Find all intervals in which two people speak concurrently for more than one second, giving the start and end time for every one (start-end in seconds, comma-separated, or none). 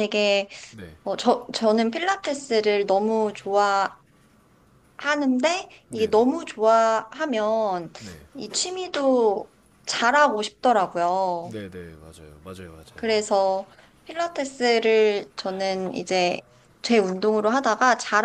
none